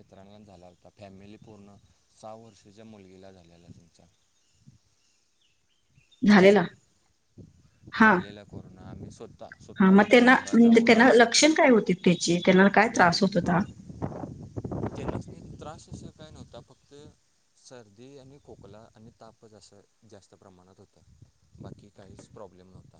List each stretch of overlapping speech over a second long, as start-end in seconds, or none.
9.8-11.3